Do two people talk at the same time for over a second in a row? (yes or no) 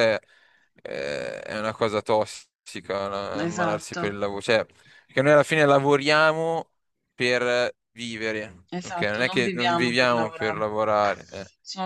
yes